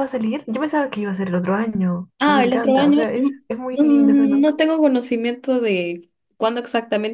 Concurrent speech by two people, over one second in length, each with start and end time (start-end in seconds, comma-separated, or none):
2.2-4.5